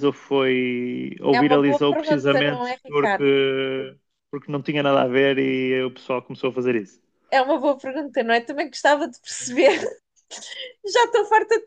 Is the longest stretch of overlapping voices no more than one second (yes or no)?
no